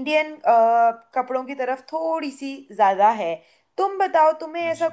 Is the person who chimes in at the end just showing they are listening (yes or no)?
yes